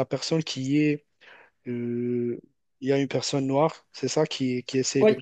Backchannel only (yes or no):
yes